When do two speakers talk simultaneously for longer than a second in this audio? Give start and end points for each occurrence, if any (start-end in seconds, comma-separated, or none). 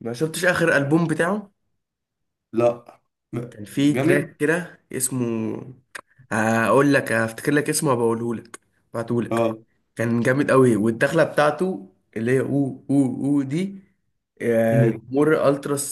none